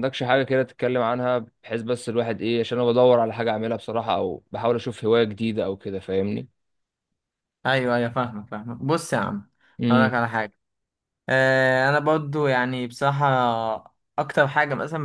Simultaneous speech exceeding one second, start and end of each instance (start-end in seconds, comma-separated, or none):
none